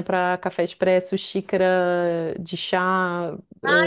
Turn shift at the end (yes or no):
yes